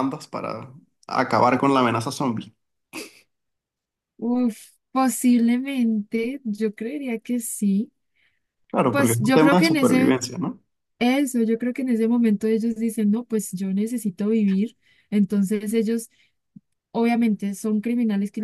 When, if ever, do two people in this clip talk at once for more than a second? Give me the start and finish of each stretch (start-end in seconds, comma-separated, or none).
8.9-10.2